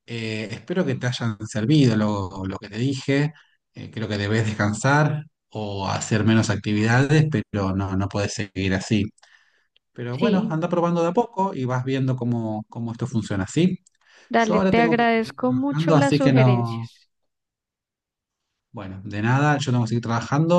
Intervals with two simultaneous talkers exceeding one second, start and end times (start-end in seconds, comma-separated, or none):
14.3-16.9